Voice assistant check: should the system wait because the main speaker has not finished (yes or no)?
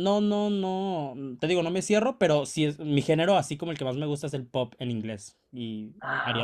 no